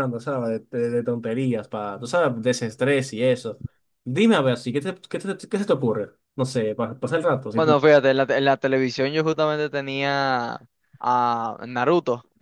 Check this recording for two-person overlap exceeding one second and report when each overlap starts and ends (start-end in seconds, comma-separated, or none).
none